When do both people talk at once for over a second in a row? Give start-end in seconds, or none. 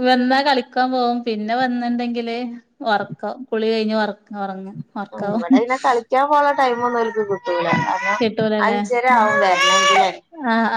none